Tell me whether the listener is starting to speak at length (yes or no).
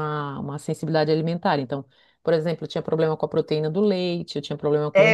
yes